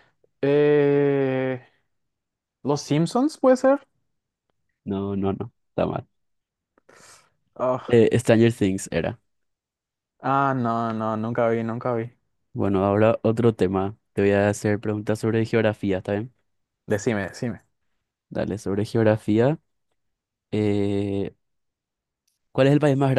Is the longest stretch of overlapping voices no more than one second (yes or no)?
yes